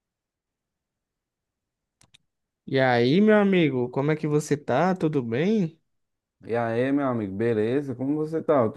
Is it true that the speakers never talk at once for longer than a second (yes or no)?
yes